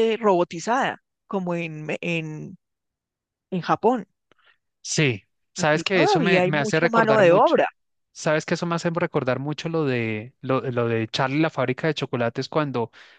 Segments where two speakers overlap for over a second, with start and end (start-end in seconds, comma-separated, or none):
5.6-7.7